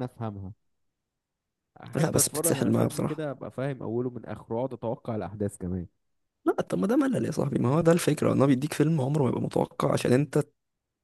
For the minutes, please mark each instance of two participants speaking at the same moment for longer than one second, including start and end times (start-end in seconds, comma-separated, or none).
1.9-3.3